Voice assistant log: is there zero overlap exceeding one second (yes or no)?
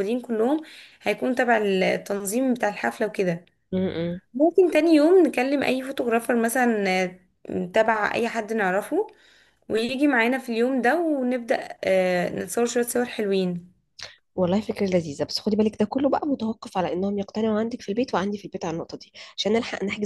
yes